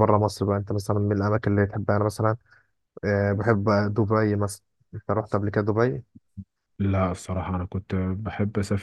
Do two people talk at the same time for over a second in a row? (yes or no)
no